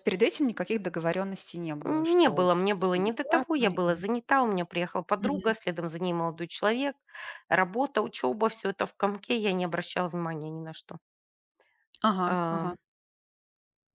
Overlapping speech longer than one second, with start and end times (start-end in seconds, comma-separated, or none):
1.8-4.0